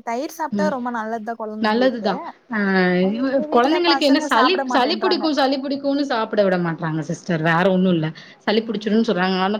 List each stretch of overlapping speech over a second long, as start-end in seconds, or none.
3.2-5.2